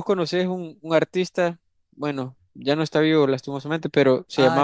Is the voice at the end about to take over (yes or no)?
yes